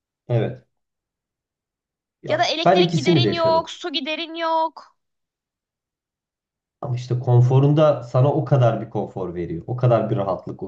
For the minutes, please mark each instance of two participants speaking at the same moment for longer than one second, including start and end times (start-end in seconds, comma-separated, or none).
2.3-3.7